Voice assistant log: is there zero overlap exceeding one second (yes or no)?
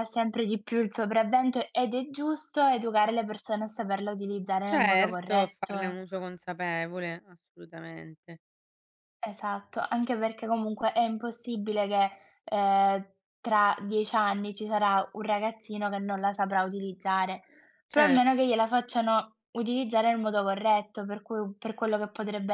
no